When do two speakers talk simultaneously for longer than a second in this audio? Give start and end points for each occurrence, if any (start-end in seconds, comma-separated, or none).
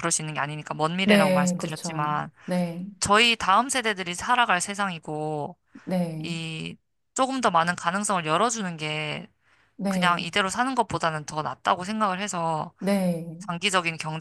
1.0-2.3